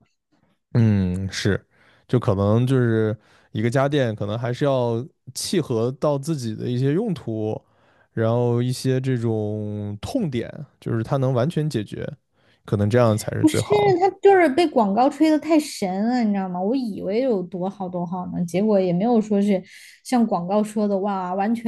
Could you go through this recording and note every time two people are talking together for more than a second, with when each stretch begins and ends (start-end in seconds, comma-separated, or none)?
none